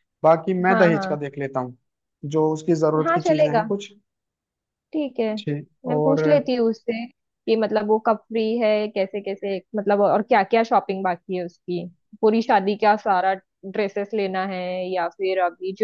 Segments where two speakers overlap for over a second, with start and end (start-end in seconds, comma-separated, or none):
none